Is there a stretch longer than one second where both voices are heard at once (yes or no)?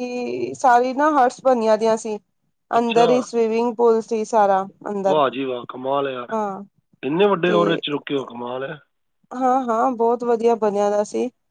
no